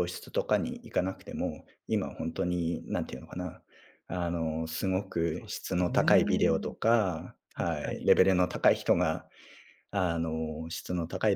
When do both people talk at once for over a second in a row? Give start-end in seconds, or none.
5.3-6.7